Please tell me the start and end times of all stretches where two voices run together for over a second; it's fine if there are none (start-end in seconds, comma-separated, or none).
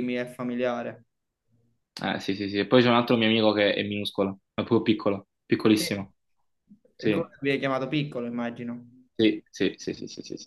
none